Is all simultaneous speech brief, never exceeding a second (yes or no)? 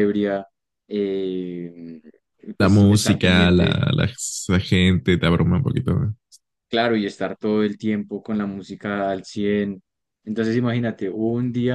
no